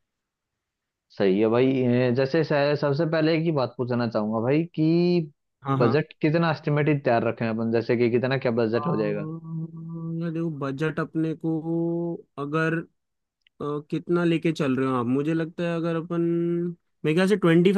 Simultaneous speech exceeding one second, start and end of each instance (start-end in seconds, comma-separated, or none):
none